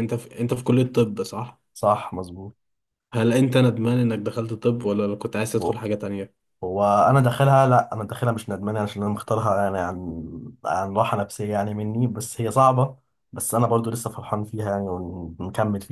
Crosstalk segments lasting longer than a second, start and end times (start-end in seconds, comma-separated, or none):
none